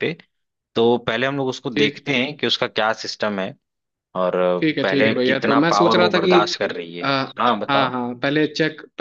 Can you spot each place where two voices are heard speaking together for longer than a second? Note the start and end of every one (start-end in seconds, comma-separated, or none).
4.8-6.3